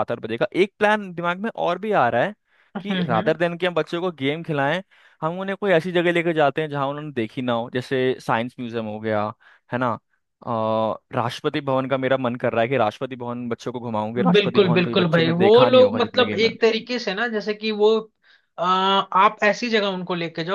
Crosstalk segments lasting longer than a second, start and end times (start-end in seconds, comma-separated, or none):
14.3-16.4